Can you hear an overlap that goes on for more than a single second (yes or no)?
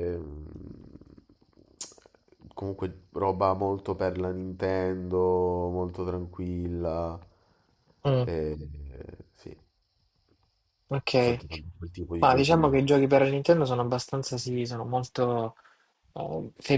no